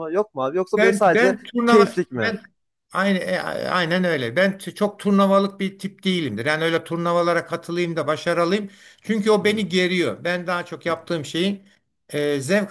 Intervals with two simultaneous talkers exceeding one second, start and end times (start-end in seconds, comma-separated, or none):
0.8-2.3